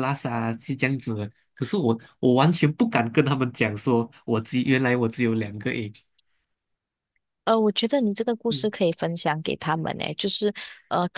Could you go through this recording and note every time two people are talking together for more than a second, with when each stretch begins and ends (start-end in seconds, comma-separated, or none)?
none